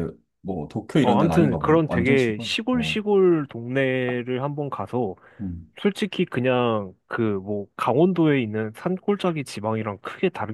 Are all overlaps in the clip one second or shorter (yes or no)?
no